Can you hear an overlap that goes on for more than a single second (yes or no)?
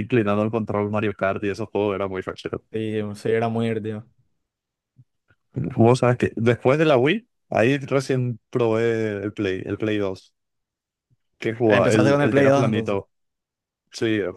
yes